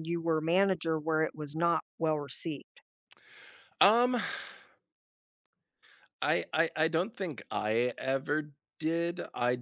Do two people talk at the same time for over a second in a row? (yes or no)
no